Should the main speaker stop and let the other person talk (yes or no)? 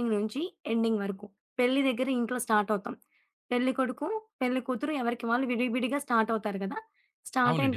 no